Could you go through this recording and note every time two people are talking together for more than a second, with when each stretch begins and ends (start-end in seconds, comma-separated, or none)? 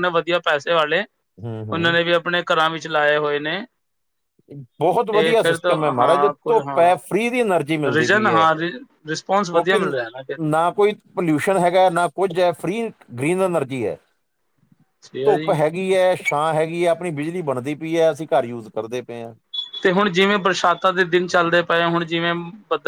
5.1-7.0